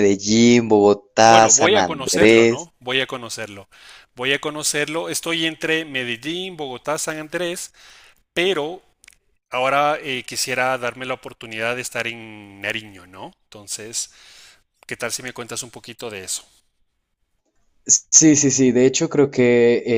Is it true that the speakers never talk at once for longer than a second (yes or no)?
no